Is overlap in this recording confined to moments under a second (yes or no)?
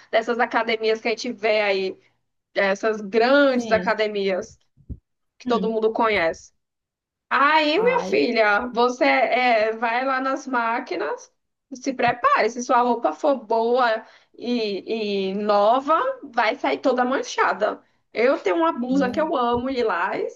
yes